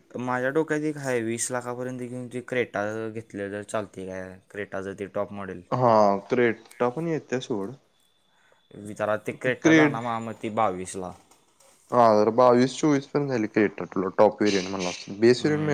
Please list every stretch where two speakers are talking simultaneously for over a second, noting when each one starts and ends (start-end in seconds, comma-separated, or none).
none